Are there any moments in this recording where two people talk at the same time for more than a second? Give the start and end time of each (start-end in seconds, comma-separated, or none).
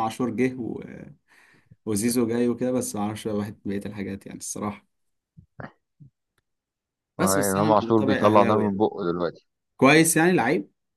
7.2-8.8